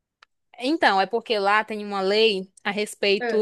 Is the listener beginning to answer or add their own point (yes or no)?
no